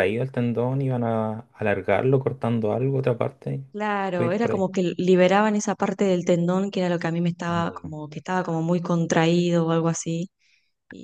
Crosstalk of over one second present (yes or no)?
no